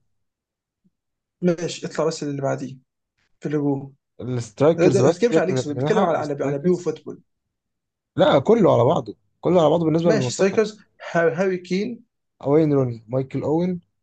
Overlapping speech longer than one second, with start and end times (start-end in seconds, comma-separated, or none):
4.8-6.8